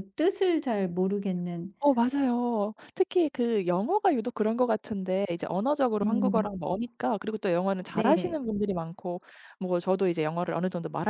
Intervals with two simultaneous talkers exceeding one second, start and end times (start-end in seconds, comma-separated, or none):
none